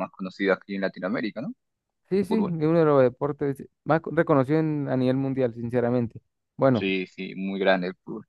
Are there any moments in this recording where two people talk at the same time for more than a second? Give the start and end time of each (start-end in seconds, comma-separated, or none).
none